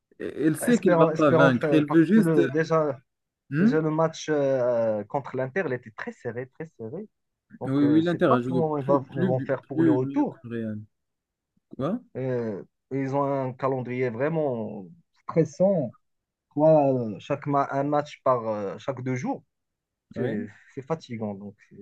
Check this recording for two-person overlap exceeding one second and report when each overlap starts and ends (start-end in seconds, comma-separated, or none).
0.7-2.5, 7.7-10.4